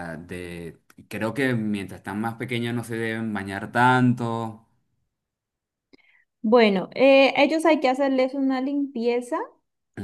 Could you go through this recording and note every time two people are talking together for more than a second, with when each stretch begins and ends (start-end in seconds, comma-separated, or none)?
none